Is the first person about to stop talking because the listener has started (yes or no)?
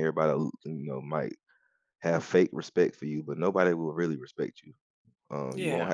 no